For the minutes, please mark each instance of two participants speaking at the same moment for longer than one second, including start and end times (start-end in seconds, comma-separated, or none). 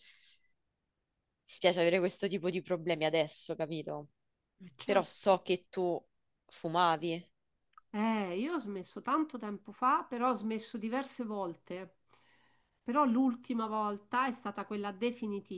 none